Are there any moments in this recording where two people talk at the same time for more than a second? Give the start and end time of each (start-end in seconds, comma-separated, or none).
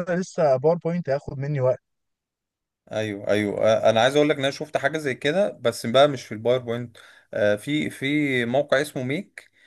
none